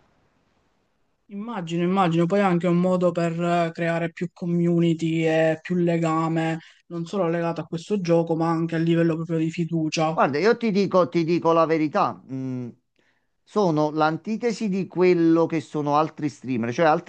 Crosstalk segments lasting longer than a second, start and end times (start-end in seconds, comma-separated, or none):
none